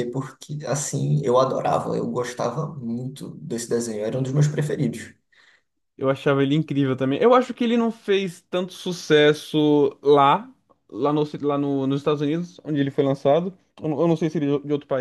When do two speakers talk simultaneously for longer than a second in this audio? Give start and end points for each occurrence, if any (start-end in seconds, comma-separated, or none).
none